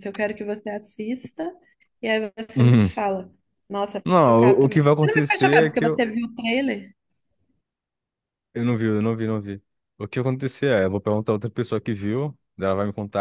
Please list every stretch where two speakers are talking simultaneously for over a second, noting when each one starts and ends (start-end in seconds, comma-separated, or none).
4.0-6.0